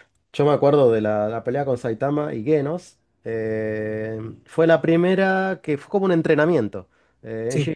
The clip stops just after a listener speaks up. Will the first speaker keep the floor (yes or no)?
yes